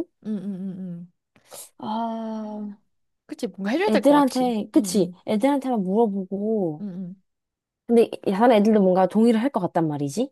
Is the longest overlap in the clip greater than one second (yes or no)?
yes